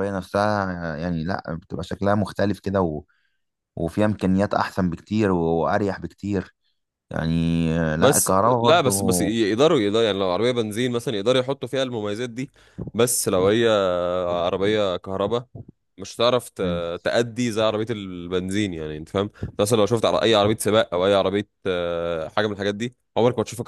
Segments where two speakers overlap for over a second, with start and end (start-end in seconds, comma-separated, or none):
8.0-9.3